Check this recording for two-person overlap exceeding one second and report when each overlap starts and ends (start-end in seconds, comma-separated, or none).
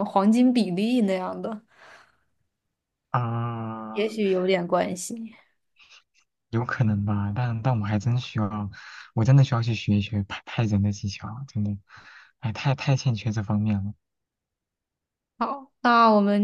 none